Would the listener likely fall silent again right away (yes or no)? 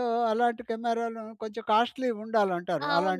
no